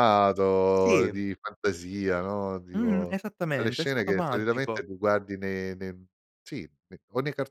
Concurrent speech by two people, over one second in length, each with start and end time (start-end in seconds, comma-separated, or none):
2.7-4.8